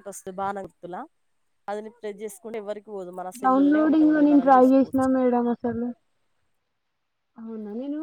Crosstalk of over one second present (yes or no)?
yes